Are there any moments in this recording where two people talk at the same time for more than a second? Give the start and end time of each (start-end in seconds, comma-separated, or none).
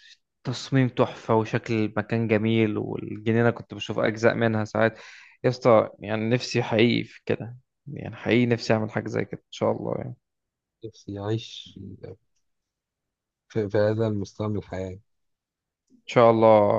none